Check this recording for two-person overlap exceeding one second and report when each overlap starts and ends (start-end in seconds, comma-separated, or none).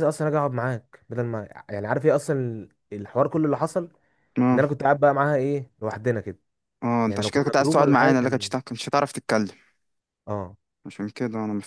7.1-8.5